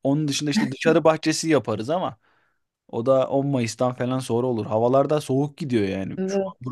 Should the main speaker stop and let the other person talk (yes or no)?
no